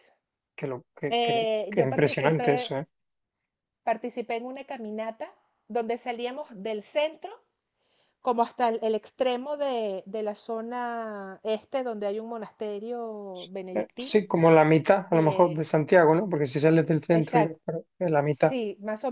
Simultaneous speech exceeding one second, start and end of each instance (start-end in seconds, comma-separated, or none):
1.1-2.8